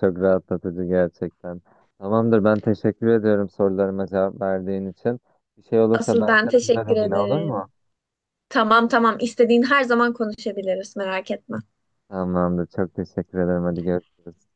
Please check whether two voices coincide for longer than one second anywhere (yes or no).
yes